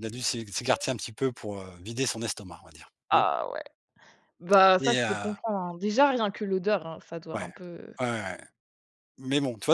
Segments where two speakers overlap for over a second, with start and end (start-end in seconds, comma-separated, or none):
none